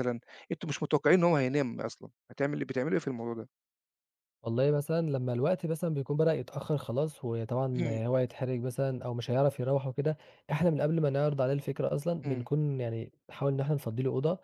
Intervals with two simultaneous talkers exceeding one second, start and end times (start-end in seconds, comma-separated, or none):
none